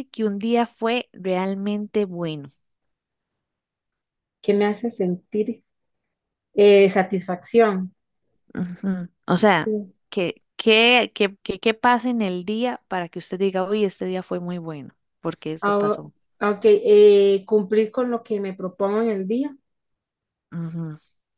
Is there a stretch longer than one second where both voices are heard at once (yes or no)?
no